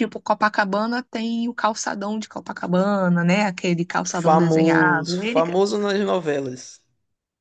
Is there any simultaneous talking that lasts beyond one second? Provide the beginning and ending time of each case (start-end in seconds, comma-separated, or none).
4.2-5.4